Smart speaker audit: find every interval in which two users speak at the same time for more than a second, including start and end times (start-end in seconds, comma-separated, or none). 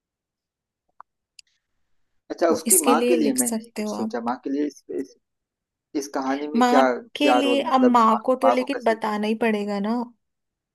2.5-4.2, 6.5-9.0